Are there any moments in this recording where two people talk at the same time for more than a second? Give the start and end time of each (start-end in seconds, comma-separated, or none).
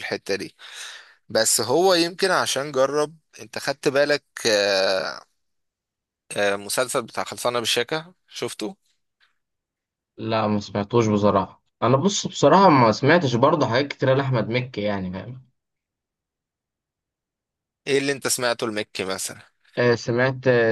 none